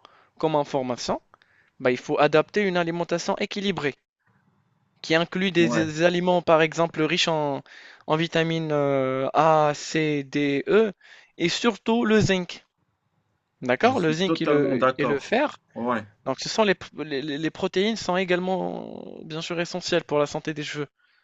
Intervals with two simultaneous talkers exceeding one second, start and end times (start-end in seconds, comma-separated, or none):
13.8-15.4